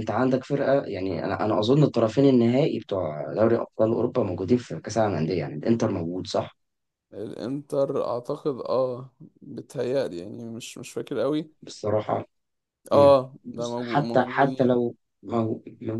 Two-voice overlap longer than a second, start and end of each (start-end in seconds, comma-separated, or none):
12.9-14.8